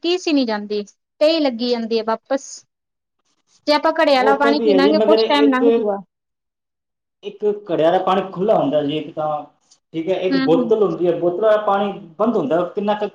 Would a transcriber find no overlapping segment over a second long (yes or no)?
no